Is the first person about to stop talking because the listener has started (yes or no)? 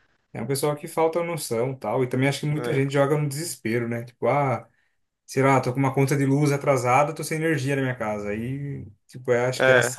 no